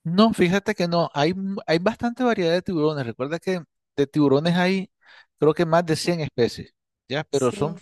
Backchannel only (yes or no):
yes